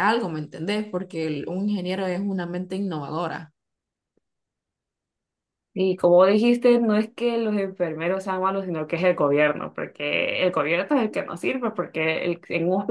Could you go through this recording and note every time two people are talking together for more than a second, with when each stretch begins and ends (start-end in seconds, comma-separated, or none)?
none